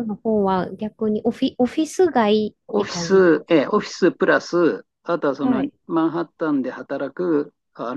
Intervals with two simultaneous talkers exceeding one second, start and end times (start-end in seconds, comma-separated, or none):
2.7-3.9